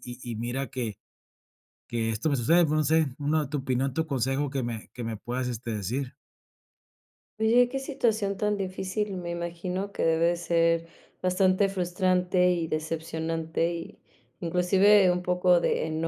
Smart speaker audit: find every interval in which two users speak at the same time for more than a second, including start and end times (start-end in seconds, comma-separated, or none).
none